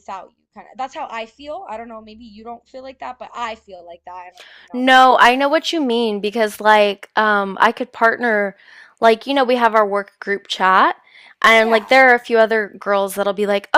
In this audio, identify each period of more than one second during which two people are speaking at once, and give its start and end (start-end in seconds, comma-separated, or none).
none